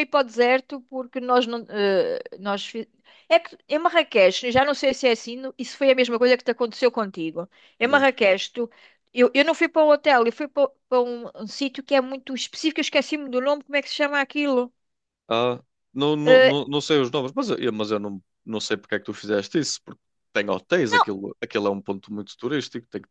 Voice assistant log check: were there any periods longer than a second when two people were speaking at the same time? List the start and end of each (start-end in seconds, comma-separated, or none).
none